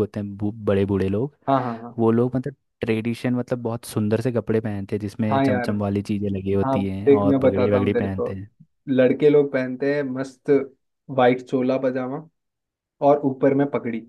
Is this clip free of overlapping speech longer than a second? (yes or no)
no